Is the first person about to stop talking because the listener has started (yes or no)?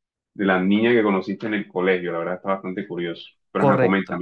yes